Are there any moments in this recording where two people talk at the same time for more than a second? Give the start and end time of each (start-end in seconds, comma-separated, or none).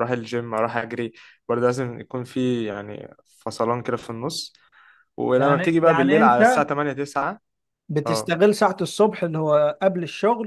5.3-6.7